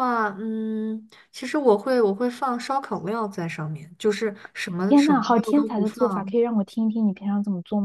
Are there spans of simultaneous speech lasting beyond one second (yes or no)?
yes